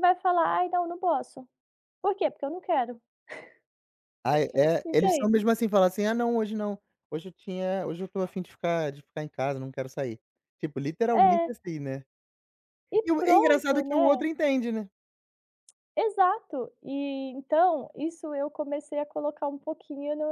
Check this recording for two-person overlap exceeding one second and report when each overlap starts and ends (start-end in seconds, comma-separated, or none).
13.0-14.3